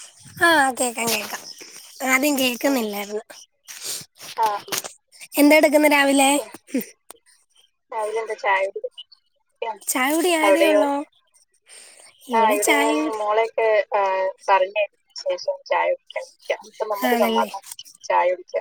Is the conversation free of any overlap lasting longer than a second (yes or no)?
yes